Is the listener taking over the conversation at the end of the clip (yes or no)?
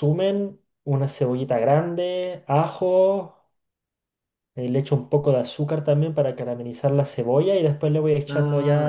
no